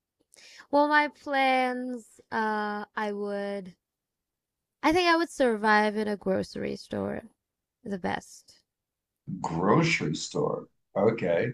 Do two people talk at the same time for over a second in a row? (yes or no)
no